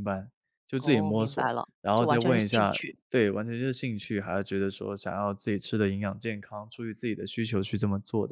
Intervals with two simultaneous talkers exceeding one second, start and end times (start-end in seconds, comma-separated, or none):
0.8-3.0